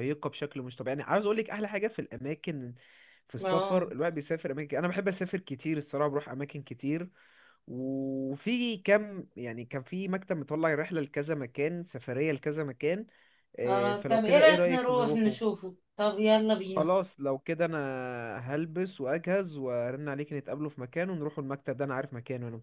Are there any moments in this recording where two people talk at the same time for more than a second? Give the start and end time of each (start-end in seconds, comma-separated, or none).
13.6-15.5